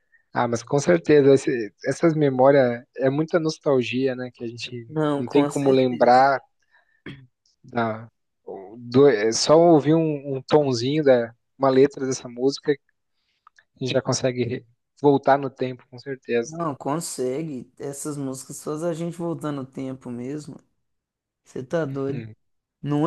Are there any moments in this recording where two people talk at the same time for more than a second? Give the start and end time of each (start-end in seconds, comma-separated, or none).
4.9-6.3